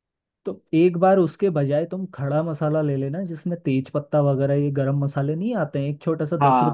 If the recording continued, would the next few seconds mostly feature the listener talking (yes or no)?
yes